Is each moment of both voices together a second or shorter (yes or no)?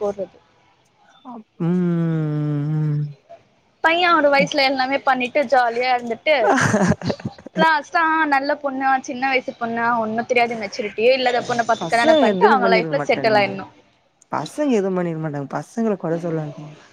no